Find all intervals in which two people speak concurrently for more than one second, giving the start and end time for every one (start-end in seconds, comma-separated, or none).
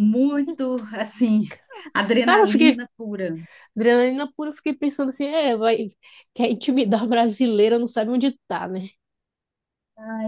none